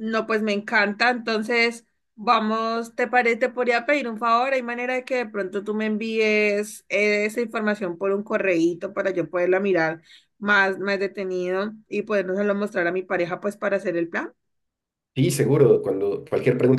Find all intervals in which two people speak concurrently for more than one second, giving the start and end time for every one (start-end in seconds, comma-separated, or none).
none